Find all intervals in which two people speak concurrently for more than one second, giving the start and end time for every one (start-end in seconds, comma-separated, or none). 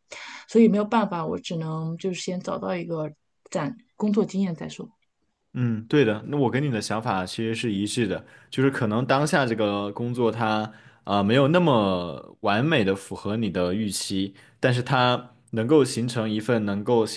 none